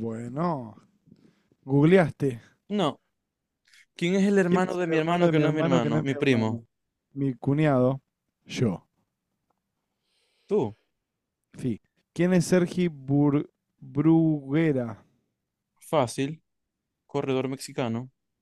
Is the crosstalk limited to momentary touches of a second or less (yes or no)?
no